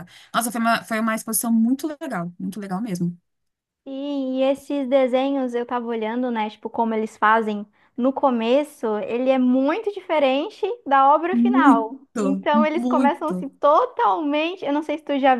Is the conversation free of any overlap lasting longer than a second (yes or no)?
no